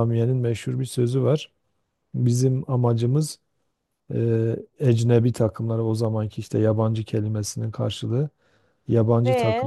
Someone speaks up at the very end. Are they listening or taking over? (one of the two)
listening